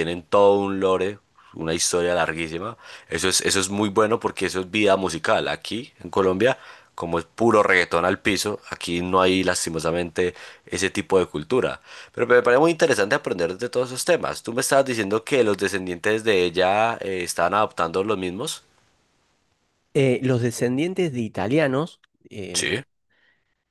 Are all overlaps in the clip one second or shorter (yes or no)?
yes